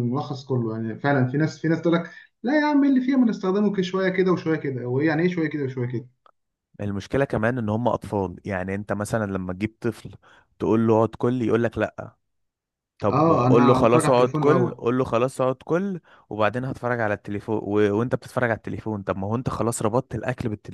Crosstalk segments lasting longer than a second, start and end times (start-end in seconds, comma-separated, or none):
13.1-14.8